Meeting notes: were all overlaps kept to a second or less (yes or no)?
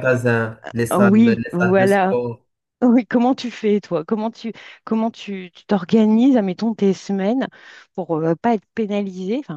no